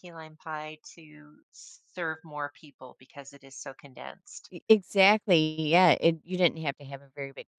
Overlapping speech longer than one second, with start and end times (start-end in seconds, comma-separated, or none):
none